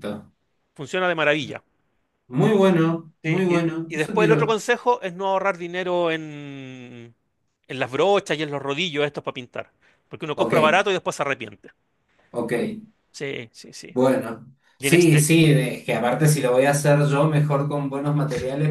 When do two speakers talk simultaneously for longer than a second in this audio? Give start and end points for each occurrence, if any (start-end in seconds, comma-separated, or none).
3.2-4.6